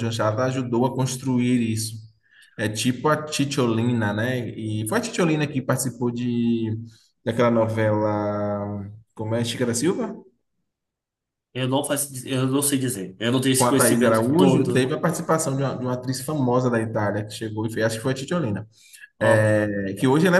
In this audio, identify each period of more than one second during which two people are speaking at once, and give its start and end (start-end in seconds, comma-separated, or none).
13.6-14.9